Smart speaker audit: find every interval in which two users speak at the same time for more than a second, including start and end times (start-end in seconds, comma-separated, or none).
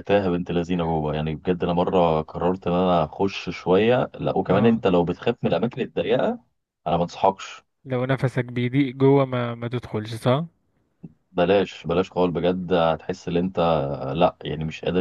none